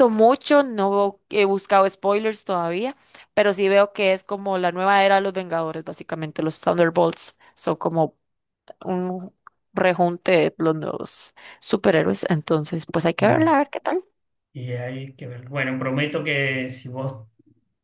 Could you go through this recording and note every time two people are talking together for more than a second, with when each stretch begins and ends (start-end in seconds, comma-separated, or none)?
none